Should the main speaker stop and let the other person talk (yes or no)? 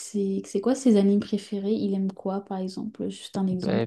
yes